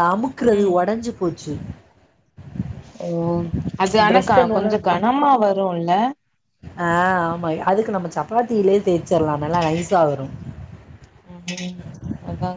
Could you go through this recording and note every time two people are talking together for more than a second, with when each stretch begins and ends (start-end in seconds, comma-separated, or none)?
none